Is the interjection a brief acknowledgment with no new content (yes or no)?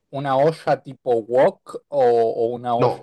no